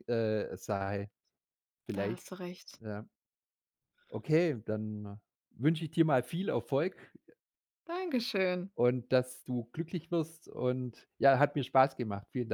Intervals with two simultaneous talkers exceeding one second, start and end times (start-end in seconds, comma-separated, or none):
none